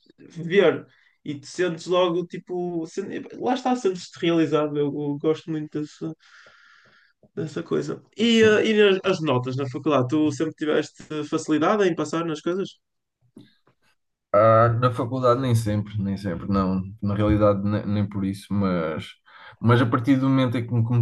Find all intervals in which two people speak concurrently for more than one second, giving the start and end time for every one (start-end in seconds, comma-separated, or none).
none